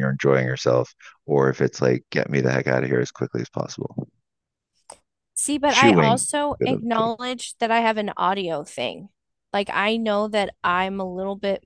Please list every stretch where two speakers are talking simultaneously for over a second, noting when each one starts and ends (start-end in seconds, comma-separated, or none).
5.7-7.1